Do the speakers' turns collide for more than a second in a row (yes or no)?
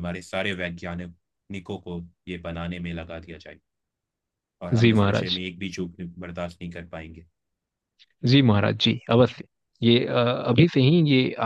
no